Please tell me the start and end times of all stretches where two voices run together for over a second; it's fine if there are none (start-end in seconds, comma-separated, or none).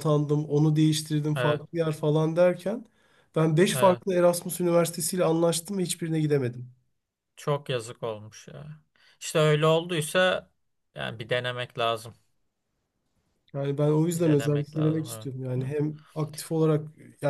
14.1-15.7